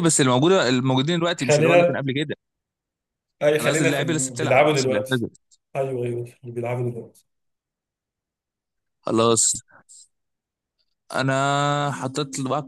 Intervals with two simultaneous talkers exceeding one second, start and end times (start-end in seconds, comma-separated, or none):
3.6-5.2